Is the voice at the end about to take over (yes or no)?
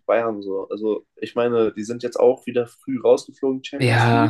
yes